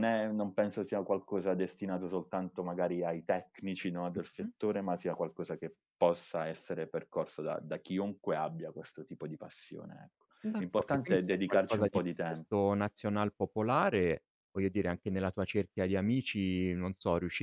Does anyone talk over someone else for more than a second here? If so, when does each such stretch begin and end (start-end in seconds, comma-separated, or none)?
10.4-12.5